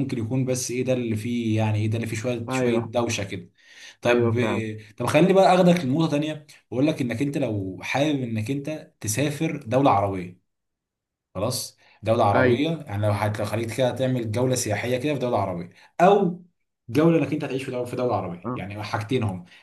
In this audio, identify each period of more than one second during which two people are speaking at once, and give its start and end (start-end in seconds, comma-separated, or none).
none